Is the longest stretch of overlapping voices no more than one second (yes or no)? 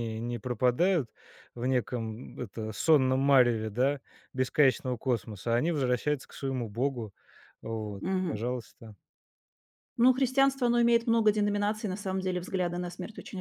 yes